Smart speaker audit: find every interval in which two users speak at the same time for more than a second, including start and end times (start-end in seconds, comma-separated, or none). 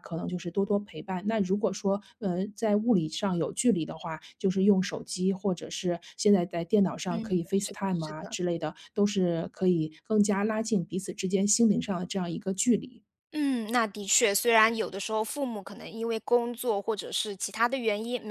7.1-8.4